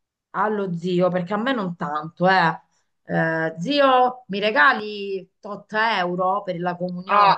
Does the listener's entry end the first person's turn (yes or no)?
yes